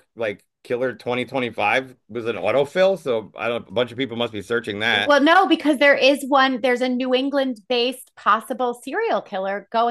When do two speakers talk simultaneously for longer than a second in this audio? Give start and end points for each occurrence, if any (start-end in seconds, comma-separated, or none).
none